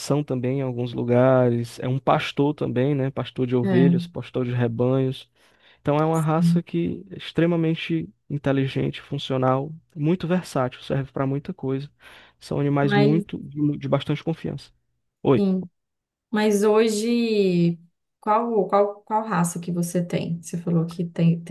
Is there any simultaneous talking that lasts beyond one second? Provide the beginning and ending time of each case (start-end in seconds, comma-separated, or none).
none